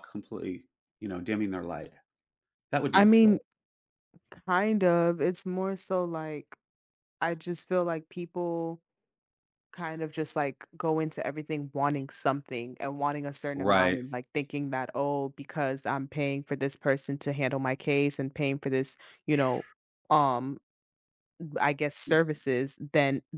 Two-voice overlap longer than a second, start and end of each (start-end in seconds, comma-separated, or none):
none